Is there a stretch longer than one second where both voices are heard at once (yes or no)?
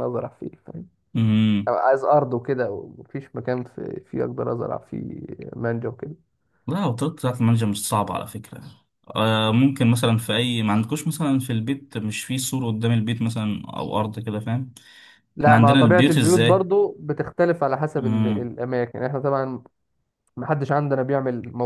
yes